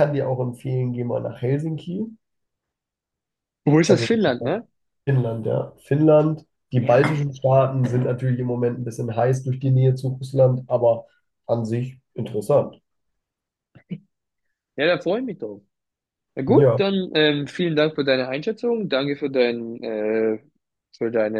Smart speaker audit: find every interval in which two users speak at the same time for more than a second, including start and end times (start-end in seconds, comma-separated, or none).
none